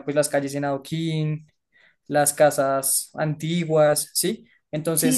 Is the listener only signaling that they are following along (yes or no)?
no